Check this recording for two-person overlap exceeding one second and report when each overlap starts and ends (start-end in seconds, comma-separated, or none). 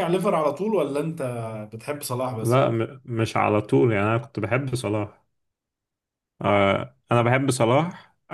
none